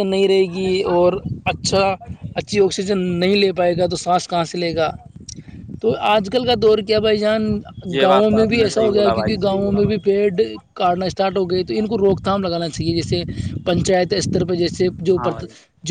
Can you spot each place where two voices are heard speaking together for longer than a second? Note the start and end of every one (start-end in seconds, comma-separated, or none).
8.0-9.3